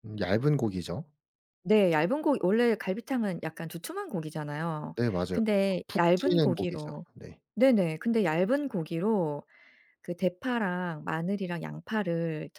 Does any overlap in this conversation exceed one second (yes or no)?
yes